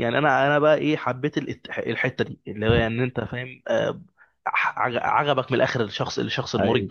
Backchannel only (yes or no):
no